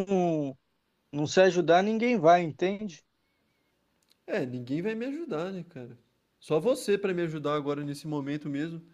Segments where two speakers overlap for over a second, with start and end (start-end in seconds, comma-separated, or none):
none